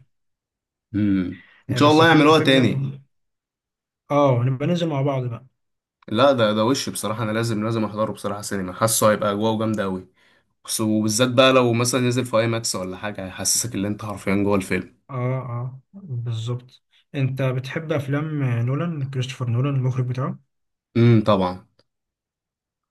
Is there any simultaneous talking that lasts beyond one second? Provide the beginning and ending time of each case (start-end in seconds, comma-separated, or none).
1.7-2.9